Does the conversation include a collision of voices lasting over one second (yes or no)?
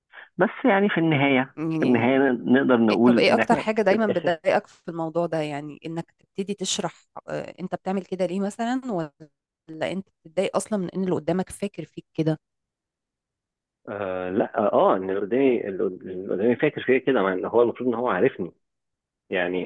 yes